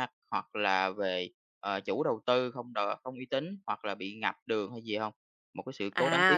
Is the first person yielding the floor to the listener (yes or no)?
yes